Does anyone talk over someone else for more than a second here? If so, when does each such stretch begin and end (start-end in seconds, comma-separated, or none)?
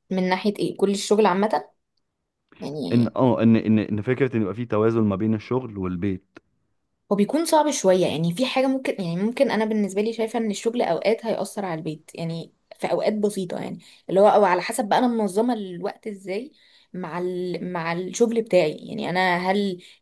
none